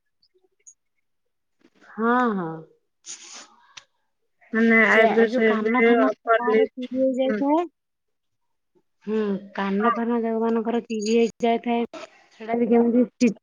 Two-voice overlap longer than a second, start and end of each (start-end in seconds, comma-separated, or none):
4.9-6.8